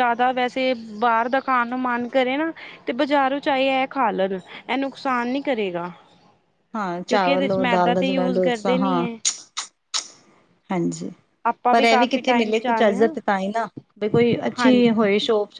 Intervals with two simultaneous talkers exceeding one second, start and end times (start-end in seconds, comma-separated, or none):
7.1-9.1, 11.7-13.1